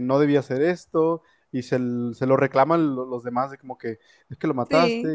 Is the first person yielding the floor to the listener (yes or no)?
no